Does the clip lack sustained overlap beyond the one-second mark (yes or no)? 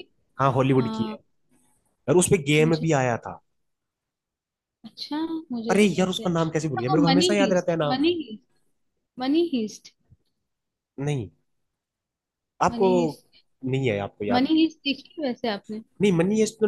no